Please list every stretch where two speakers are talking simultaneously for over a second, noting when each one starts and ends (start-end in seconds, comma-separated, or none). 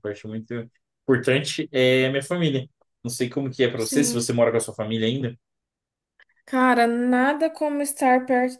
none